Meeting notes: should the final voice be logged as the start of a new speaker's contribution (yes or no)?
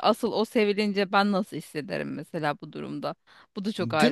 yes